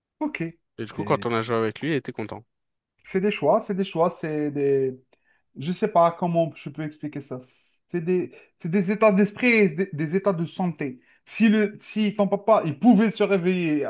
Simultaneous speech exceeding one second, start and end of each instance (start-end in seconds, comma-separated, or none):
none